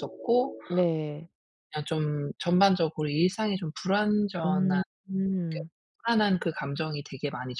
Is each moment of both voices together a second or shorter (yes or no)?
yes